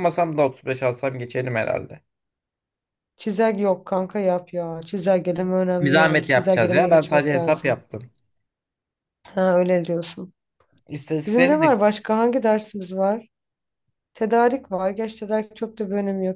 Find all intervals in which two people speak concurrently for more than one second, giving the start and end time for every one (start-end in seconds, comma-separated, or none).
5.8-7.8